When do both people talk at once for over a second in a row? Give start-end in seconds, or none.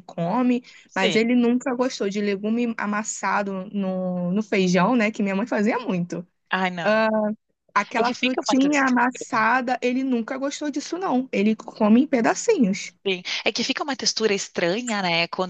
8.0-9.5